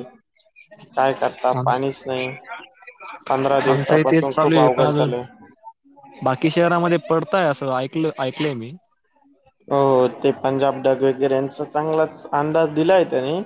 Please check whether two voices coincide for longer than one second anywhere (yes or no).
yes